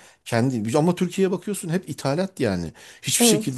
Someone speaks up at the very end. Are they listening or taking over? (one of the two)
listening